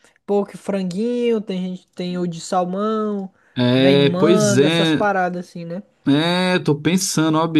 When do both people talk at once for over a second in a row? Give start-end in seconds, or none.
3.8-5.0